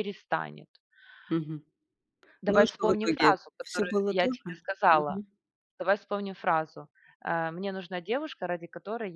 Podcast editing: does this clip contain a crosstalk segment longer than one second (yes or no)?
yes